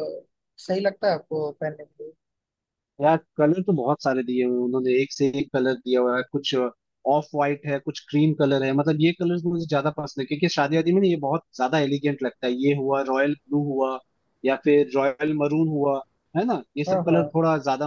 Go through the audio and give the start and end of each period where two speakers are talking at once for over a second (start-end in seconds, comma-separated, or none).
none